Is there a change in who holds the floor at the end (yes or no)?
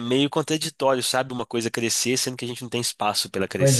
yes